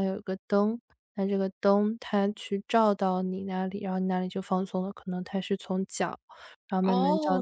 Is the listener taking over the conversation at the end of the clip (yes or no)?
yes